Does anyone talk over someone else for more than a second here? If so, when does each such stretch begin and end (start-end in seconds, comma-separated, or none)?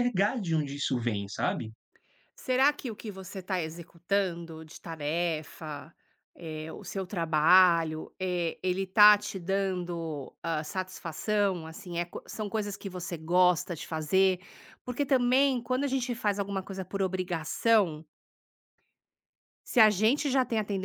none